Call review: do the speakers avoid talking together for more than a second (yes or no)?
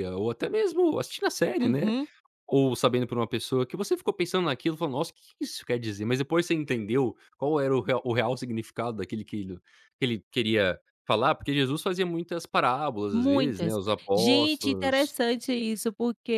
no